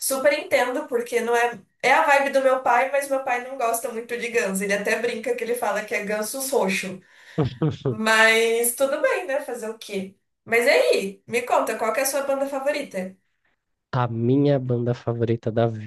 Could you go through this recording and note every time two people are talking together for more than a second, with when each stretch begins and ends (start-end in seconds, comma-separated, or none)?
none